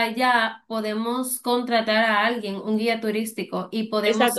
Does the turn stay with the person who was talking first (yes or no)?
no